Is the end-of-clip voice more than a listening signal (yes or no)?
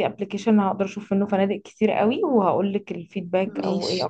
no